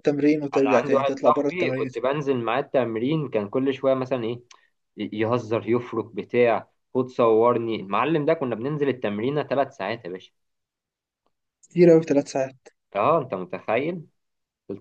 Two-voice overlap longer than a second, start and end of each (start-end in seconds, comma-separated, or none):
0.5-2.0